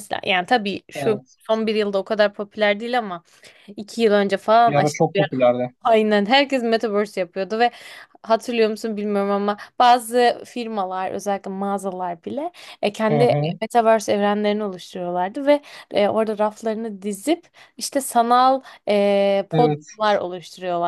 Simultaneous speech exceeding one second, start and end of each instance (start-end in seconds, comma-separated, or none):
none